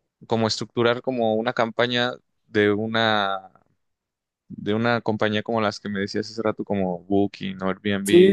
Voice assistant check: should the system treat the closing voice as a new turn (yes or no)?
yes